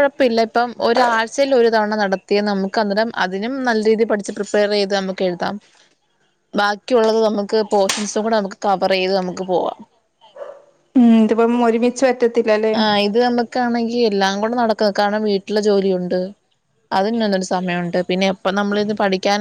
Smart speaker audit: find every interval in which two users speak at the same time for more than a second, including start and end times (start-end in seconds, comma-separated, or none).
none